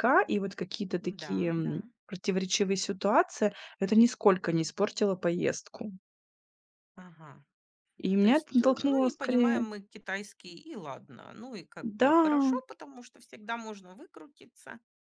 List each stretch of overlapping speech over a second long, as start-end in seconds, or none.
8.2-9.7